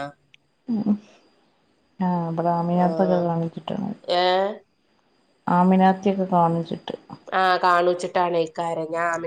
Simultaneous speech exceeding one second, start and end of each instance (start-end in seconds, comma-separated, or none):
none